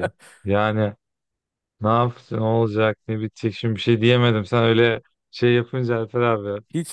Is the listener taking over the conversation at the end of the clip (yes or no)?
yes